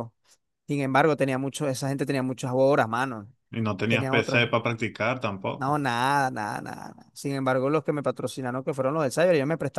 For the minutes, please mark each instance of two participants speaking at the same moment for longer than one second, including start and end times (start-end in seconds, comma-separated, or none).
none